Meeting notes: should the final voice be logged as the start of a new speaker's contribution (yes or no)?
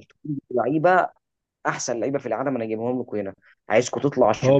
yes